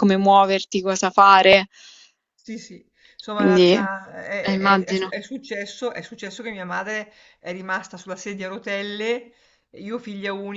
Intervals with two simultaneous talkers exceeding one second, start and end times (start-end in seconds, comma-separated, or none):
3.3-5.2